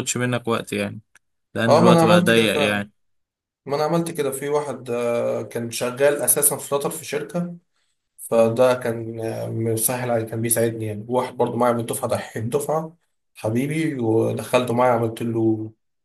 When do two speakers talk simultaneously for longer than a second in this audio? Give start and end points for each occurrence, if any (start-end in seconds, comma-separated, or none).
1.7-2.9